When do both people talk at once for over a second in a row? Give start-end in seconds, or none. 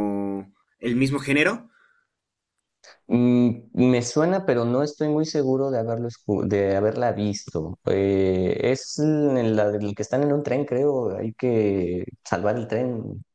none